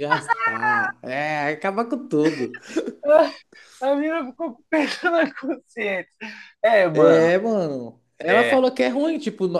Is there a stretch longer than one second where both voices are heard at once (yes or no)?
no